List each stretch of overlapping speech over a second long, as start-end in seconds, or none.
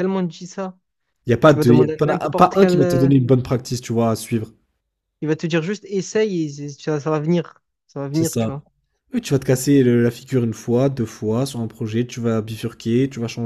1.5-3.1